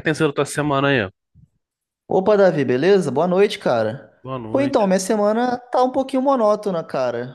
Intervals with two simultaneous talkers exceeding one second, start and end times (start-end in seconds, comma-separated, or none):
none